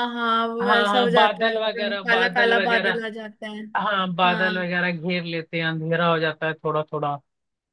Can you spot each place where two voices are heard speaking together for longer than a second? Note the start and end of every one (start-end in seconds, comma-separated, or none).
0.6-3.0